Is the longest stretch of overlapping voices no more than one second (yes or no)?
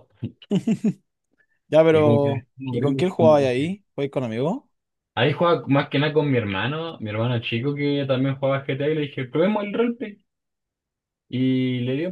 no